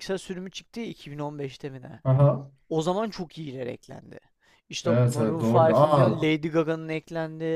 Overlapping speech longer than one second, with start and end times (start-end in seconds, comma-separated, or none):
4.8-6.2